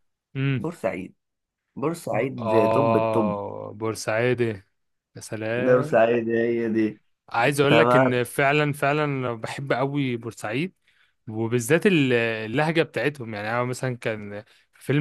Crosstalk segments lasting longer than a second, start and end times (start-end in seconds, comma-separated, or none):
2.1-3.4